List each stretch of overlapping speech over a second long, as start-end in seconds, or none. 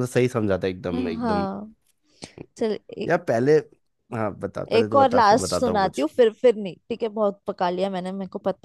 4.7-6.1